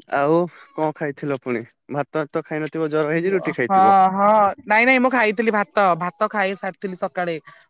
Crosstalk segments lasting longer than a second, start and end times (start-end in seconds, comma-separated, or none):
none